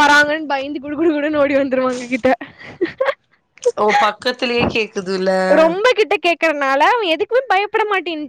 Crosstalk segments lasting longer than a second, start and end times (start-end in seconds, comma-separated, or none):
none